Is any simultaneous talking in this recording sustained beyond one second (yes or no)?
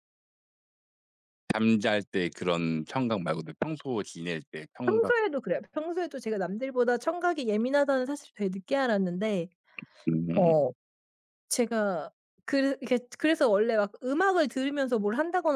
no